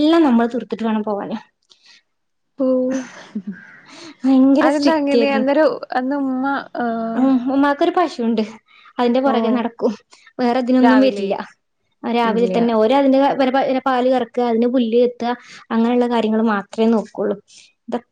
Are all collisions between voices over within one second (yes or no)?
yes